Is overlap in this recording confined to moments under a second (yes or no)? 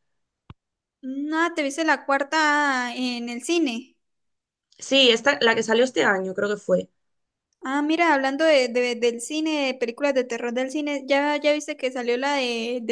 yes